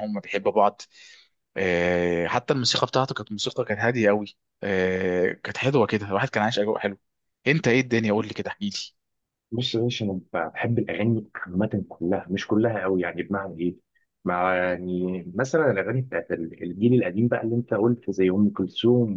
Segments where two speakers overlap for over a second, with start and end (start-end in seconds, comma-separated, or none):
none